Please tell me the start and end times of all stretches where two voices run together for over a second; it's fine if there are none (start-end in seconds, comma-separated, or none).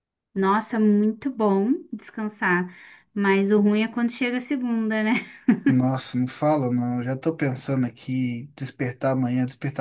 none